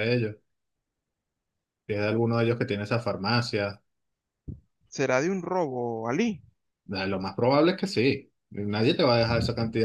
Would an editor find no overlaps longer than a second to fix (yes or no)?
yes